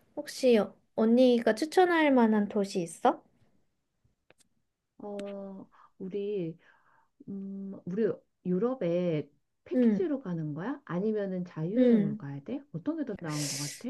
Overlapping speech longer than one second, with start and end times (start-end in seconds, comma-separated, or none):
none